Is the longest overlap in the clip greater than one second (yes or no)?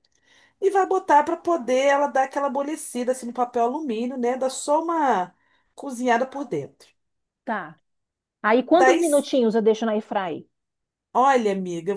no